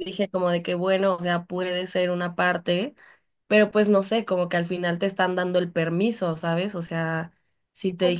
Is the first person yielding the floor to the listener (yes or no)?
no